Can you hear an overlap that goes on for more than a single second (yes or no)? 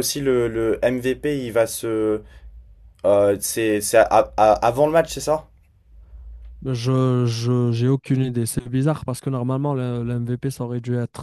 no